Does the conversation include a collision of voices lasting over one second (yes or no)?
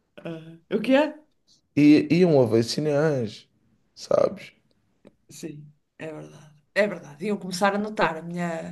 no